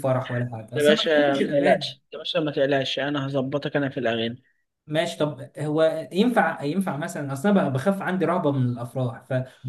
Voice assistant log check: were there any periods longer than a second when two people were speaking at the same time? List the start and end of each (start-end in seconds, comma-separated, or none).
0.8-1.9